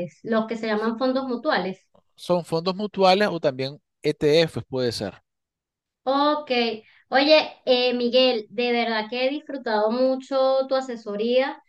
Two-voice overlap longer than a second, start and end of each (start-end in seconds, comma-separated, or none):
none